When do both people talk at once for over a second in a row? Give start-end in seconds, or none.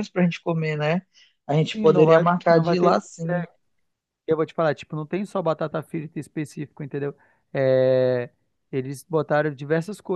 1.7-3.0